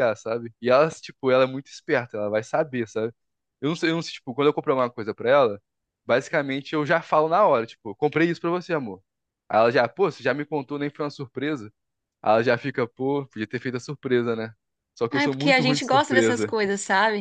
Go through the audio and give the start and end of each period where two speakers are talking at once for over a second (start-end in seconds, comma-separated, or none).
15.1-16.5